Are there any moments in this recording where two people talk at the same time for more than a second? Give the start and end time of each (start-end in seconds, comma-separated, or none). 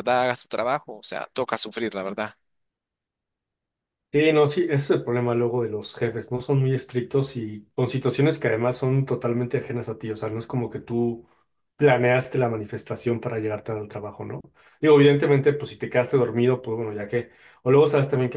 none